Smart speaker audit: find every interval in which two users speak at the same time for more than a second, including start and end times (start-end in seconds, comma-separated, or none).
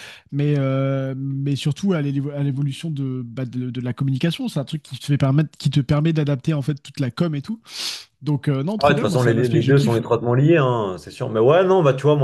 8.8-10.1